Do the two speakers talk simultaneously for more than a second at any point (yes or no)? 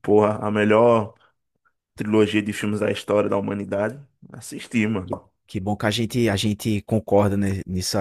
no